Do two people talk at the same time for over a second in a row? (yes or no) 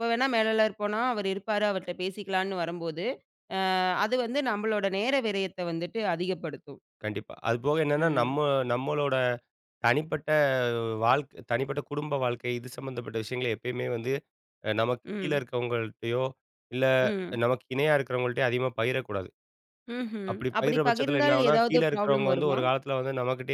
yes